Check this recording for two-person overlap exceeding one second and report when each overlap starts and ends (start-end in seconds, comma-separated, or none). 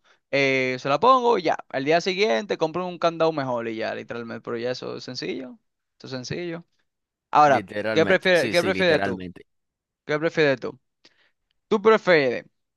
7.5-9.2